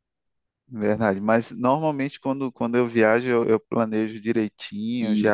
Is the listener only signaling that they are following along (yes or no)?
yes